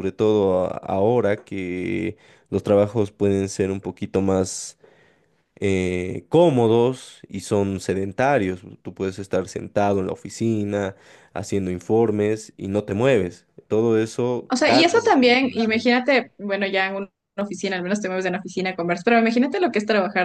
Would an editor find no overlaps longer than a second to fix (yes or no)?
no